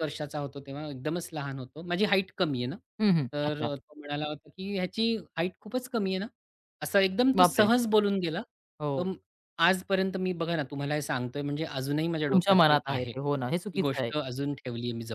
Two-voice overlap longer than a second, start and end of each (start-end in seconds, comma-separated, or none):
12.3-14.1